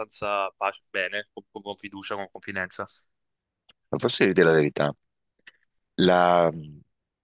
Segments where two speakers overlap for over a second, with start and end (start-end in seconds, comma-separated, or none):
none